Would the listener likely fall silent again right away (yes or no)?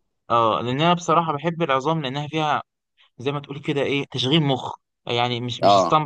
yes